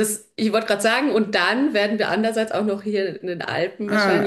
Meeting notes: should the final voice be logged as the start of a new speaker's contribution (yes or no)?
no